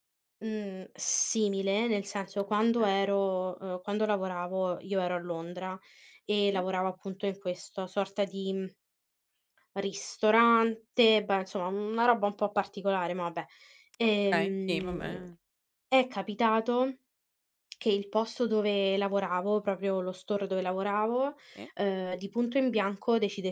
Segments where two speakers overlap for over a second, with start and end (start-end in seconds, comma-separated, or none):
14.0-15.2